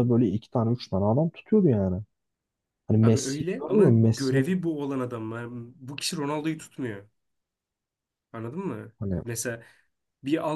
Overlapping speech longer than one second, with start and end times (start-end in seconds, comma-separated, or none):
3.0-4.6